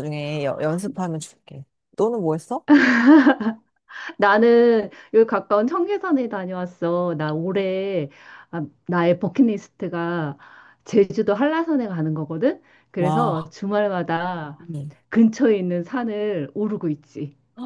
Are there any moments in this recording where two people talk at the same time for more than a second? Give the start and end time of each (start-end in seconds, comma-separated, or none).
none